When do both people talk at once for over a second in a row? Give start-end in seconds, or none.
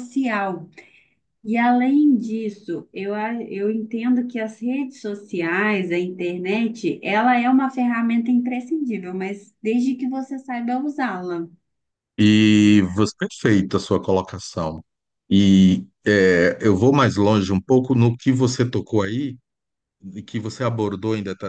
none